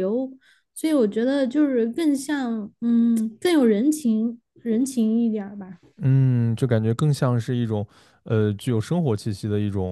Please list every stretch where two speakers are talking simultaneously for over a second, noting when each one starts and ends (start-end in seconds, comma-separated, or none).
none